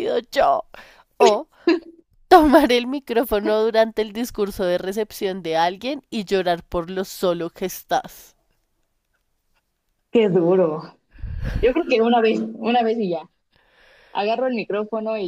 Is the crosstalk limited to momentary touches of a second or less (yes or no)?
yes